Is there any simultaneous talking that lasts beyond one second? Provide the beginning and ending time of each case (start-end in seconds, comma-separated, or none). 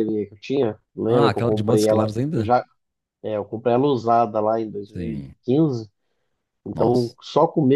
1.1-2.5